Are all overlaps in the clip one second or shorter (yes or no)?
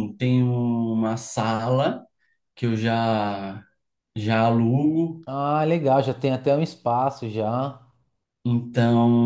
yes